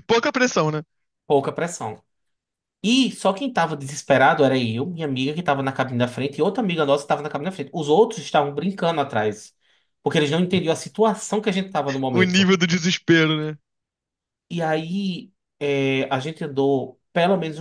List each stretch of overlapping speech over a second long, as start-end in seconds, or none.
none